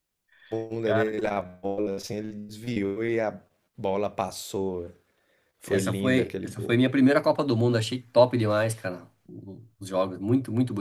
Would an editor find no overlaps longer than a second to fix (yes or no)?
no